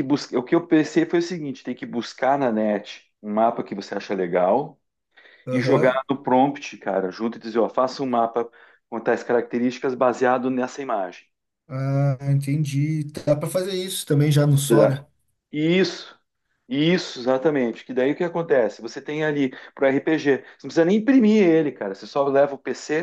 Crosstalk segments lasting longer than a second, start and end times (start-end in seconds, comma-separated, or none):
none